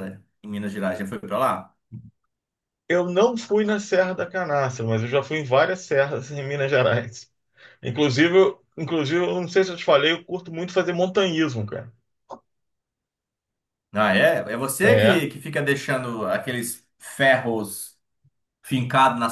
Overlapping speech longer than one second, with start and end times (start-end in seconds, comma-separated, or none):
none